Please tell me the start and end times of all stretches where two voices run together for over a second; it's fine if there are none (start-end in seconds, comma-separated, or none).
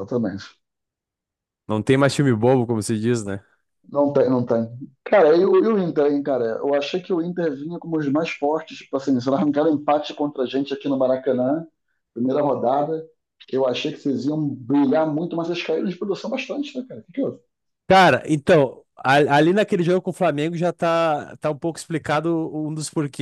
none